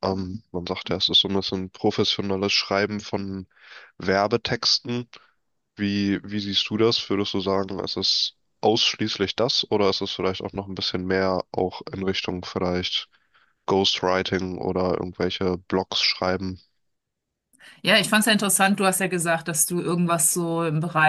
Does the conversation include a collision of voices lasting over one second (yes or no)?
no